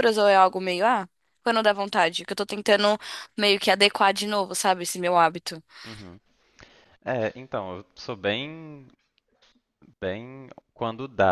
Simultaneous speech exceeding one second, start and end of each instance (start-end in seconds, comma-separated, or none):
none